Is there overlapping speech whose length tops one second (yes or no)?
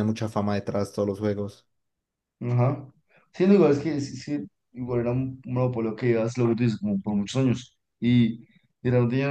no